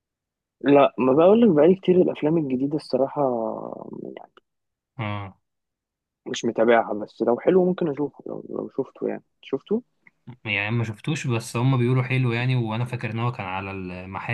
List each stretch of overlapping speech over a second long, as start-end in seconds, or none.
none